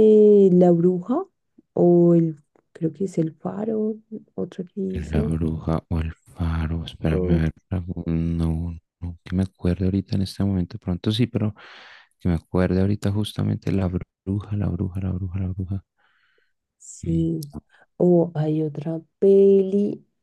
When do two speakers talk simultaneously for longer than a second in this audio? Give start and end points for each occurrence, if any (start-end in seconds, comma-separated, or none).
none